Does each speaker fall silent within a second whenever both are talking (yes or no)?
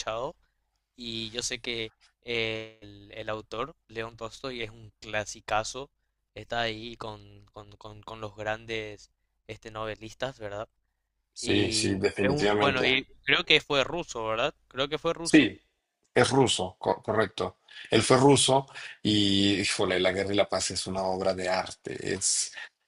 no